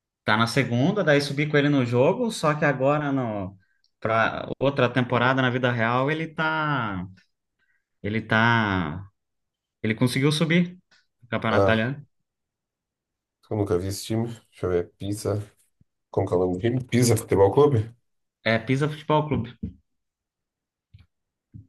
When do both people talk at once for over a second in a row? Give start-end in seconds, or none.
none